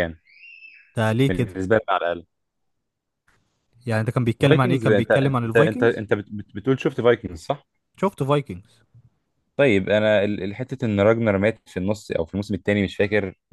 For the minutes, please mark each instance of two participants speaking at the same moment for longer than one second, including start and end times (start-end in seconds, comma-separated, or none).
4.5-6.0